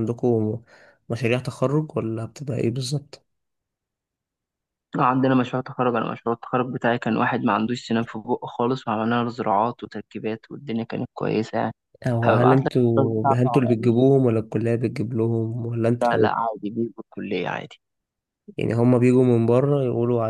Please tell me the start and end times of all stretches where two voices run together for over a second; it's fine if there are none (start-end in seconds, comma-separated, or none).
12.2-14.0